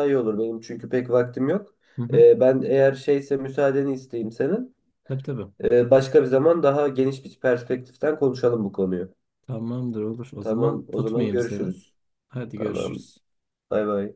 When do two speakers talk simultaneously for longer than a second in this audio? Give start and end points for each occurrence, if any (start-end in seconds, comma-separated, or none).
10.4-11.7